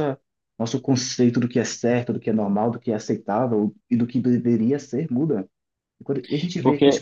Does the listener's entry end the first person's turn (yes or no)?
no